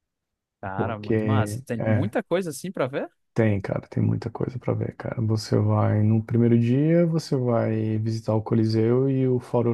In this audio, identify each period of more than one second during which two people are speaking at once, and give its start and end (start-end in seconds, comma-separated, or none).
0.8-2.1